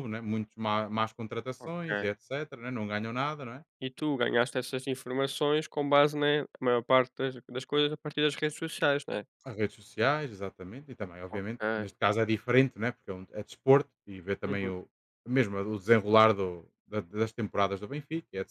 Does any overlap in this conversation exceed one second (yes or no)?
no